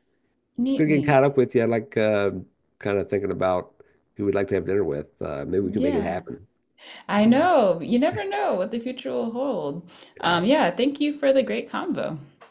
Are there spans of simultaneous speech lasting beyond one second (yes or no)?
no